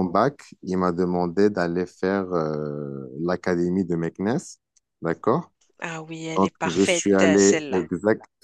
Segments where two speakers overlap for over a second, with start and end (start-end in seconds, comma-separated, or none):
6.4-7.9